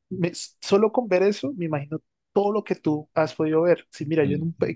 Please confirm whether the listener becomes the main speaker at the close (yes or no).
no